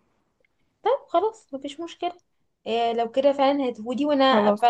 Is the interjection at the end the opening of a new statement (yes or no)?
no